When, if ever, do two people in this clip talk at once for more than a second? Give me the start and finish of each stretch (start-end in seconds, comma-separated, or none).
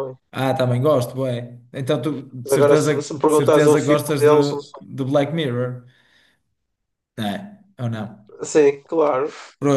2.4-4.3